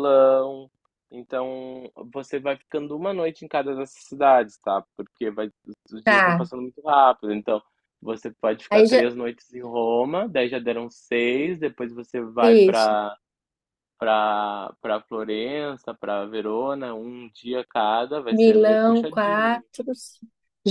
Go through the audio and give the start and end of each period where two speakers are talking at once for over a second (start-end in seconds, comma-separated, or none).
18.3-19.6